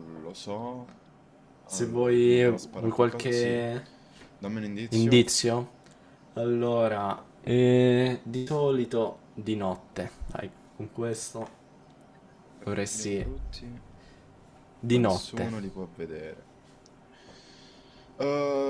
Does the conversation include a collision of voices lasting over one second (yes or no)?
yes